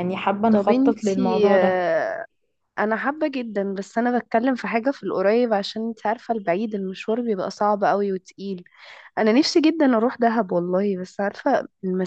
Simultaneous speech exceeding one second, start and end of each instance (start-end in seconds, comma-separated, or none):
0.5-1.8